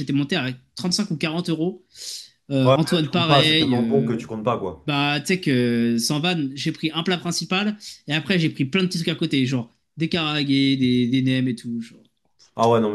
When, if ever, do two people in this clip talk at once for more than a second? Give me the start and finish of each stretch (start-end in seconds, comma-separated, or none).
2.6-4.2